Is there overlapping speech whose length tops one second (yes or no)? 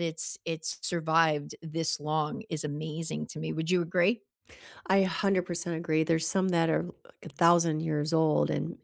no